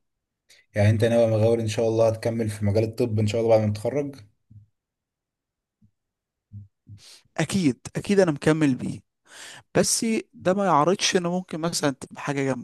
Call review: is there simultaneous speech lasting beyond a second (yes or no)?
no